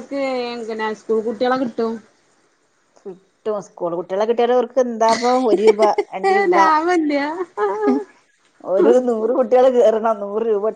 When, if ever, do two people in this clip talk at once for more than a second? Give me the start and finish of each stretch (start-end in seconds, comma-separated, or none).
none